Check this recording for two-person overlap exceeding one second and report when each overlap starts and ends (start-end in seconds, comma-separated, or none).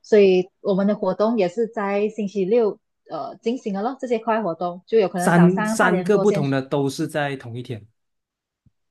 5.2-6.4